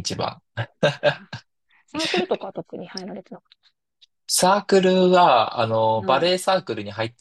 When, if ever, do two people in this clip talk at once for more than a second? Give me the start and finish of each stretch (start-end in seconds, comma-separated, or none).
none